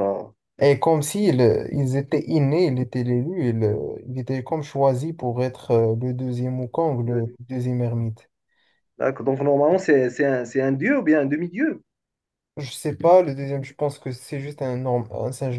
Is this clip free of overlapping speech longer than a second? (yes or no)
yes